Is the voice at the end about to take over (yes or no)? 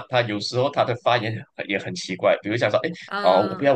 no